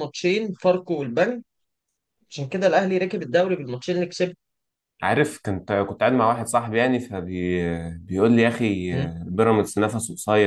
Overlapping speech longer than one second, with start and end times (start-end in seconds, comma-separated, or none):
none